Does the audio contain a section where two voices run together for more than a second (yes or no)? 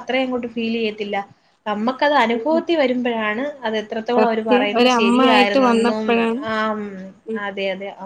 yes